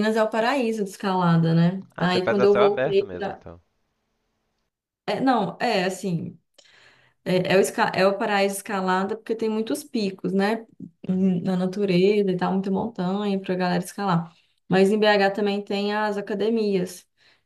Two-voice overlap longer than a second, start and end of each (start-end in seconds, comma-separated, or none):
2.0-3.4